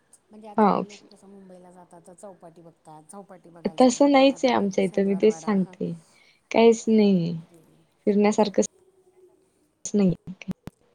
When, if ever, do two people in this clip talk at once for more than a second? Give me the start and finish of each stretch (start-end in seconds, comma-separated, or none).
3.8-5.7